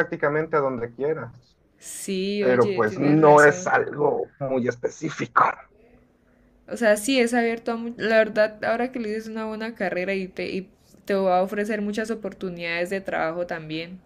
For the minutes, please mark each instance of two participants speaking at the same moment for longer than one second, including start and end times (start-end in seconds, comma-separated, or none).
2.4-3.7